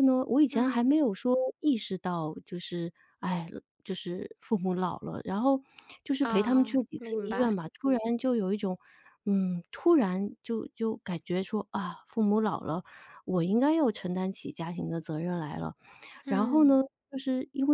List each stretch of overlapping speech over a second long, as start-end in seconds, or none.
6.2-7.5